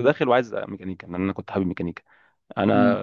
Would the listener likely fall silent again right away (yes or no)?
yes